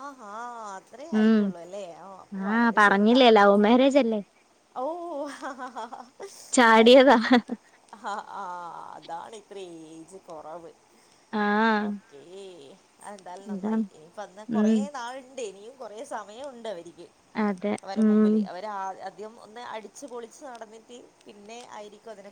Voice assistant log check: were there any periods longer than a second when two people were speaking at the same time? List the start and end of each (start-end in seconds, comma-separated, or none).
none